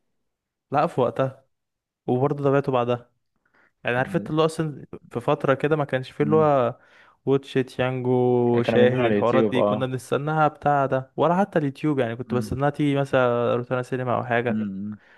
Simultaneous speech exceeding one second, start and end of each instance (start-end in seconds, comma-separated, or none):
8.5-9.9